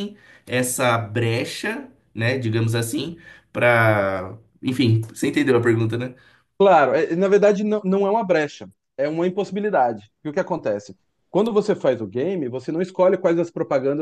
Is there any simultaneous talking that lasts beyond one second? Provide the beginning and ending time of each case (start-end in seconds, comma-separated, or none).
none